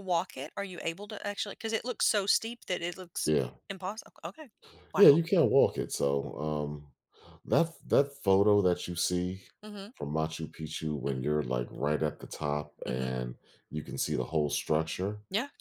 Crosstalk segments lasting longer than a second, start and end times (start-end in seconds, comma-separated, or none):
none